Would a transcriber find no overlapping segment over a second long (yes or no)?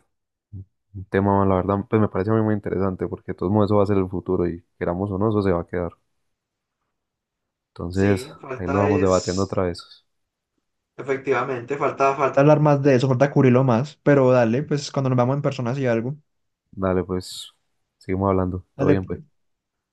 no